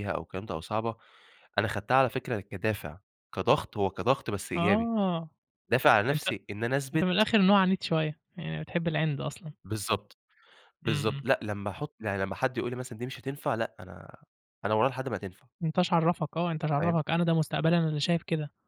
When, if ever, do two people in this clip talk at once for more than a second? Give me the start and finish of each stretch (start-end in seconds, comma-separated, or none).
none